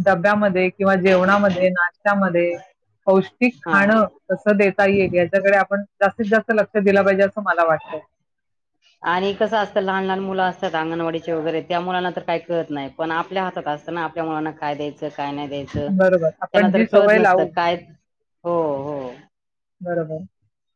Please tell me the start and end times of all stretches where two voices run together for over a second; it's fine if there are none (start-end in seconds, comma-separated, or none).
16.0-17.5